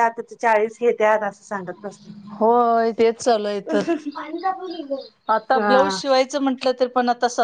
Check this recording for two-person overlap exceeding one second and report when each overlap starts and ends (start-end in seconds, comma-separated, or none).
none